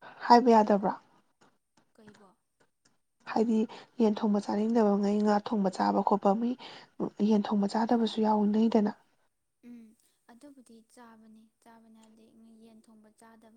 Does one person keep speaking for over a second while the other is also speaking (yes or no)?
no